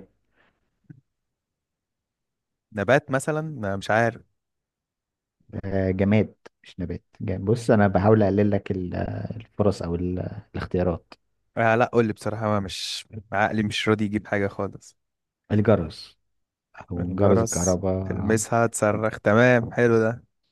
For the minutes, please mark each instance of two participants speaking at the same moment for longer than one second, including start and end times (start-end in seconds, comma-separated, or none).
17.0-18.4